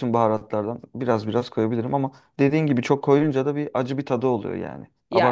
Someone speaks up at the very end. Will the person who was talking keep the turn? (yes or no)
no